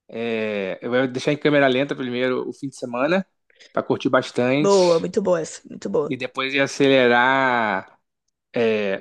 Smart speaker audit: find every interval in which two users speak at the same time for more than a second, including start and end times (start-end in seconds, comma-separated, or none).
none